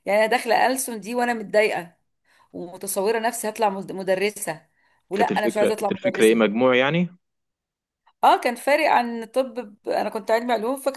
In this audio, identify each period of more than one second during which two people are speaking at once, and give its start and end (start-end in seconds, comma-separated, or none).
5.2-6.4